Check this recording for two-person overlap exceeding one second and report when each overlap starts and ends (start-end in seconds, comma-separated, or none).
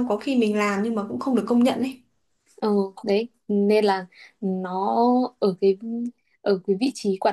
none